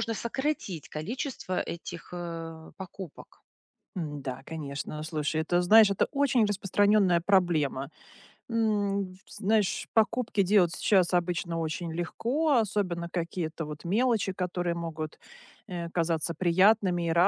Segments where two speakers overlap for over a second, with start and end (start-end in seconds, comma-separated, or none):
none